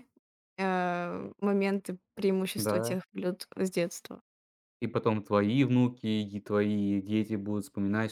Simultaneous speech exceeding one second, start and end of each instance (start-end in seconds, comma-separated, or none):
none